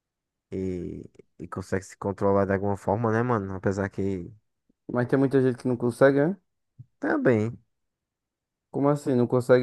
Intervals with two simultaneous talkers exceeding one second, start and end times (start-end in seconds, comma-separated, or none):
none